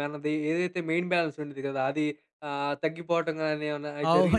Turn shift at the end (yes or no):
yes